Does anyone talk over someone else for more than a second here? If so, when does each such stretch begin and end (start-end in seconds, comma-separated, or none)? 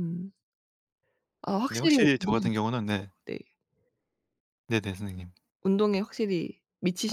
1.7-3.1